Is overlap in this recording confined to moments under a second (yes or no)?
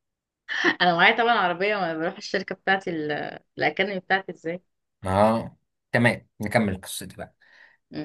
yes